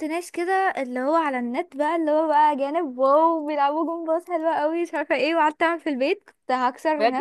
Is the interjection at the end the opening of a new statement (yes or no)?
yes